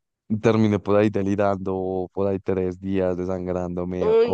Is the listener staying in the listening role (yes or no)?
no